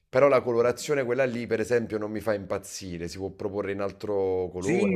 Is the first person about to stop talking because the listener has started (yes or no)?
yes